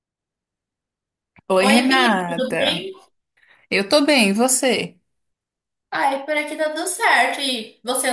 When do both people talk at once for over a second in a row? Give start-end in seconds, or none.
1.6-2.9